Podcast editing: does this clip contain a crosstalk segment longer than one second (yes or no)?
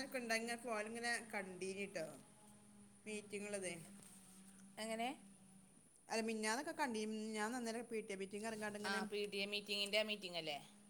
no